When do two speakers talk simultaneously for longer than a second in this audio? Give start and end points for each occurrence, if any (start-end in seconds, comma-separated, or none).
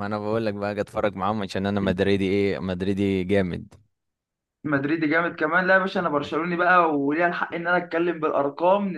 none